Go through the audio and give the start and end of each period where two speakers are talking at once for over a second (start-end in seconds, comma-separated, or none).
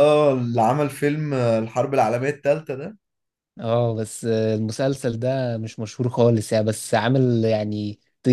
none